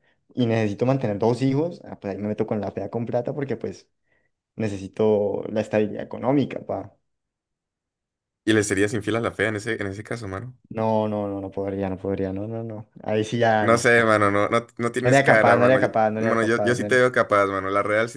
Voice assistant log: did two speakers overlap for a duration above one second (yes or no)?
yes